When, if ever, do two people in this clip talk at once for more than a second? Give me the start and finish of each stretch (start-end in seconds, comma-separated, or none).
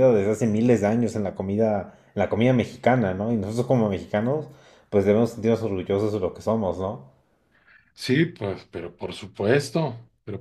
none